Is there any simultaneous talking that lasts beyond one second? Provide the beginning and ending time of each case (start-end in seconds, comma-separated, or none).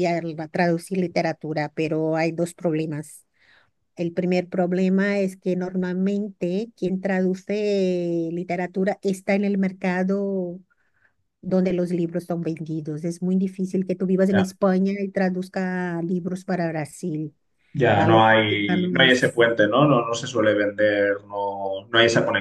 17.9-19.4